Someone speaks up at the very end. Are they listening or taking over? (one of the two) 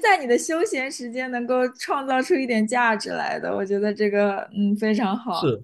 taking over